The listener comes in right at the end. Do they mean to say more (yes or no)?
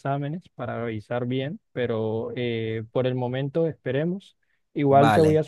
no